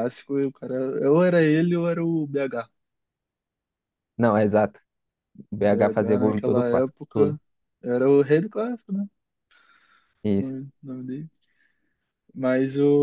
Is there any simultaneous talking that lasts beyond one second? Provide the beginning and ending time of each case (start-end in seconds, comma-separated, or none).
5.7-7.4